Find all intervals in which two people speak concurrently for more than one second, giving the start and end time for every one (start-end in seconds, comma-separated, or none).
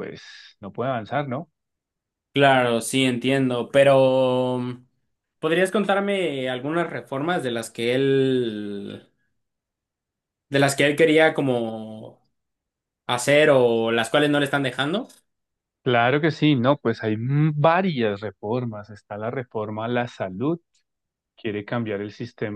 none